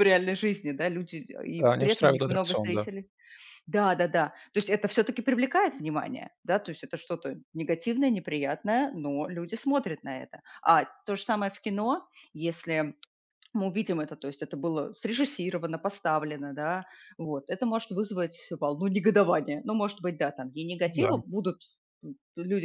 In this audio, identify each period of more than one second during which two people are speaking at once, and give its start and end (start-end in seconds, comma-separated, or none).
1.6-2.9